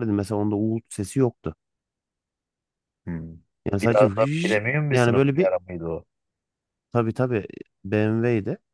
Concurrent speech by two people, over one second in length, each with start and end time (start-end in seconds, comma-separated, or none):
3.8-5.5